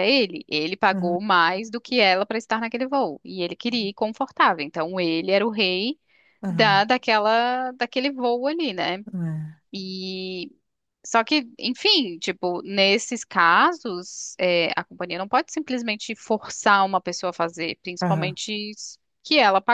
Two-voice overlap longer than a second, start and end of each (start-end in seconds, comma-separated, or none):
none